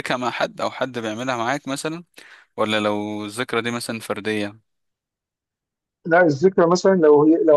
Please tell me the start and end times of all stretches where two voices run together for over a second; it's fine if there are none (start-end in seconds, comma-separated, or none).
none